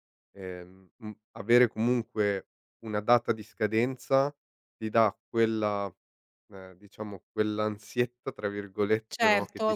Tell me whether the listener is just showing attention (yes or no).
no